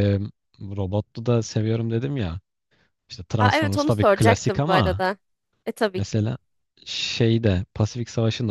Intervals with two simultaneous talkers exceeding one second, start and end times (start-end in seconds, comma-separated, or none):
3.4-5.0